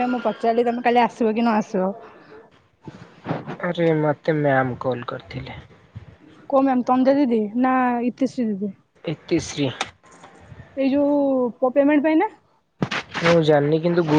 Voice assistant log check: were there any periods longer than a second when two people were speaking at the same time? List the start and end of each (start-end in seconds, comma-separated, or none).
none